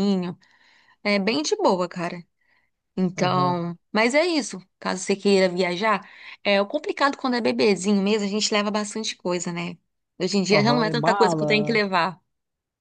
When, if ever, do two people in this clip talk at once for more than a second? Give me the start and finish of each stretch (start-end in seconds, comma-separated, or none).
10.5-11.8